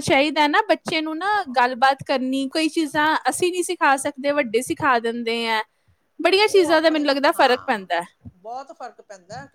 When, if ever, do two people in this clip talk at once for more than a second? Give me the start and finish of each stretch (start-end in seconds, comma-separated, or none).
6.3-7.8